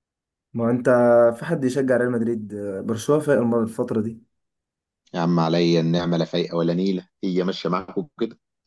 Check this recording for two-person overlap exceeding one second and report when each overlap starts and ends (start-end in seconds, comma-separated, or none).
none